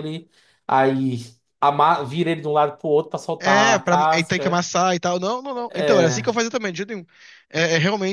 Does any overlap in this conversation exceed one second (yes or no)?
yes